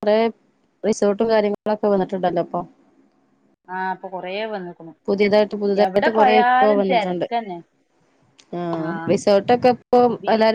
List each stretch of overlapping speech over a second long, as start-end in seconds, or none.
5.8-7.3